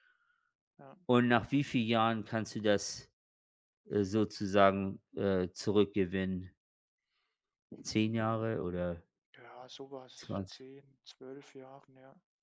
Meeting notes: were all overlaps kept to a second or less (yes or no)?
yes